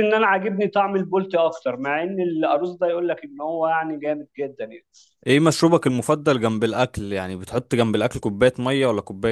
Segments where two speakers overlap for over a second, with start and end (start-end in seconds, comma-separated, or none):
none